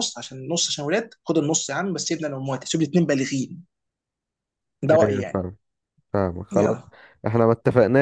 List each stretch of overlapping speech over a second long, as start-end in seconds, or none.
none